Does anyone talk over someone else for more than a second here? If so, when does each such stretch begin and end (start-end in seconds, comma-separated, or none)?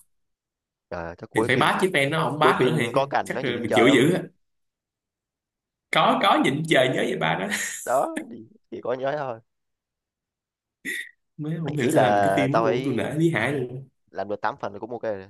2.4-4.1, 11.8-13.0